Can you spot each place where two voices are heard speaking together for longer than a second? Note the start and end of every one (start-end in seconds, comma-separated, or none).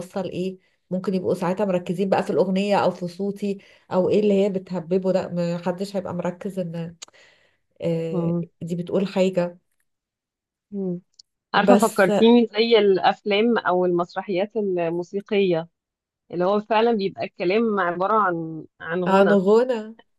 none